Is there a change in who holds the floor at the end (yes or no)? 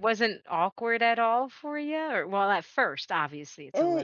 yes